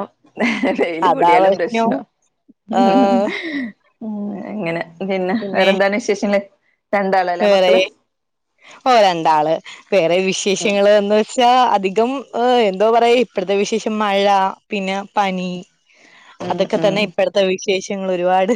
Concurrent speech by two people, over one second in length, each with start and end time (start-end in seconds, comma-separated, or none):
none